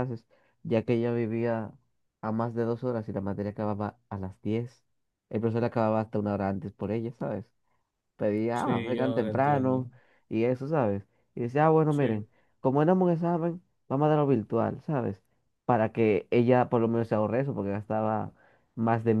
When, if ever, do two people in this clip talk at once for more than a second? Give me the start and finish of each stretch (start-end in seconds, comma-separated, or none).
8.5-9.9